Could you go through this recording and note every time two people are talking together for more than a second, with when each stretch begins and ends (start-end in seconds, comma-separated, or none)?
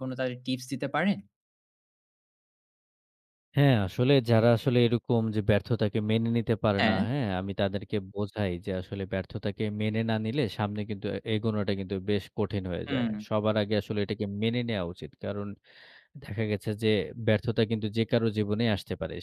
none